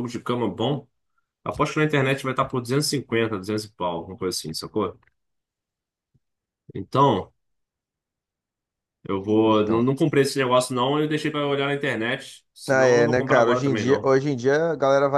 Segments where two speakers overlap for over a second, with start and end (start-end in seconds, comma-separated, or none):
12.7-14.1